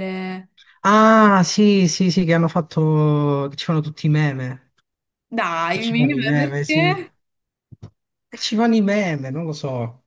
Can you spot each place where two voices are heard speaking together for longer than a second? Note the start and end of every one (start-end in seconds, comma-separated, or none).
5.7-7.0